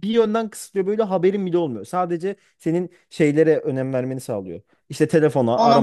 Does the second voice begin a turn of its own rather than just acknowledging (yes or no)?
no